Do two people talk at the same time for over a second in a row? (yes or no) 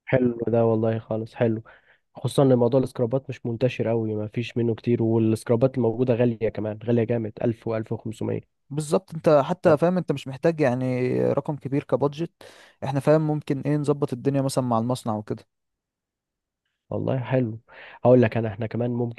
no